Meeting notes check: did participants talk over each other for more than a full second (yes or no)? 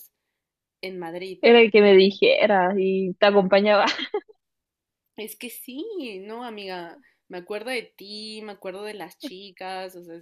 no